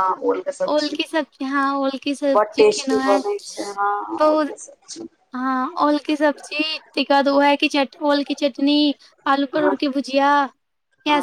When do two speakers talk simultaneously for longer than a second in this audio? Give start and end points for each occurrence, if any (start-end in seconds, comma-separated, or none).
2.4-4.5